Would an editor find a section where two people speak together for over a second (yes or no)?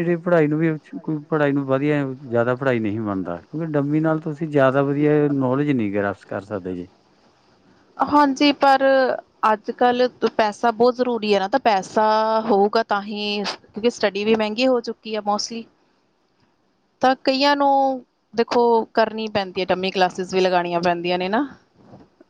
no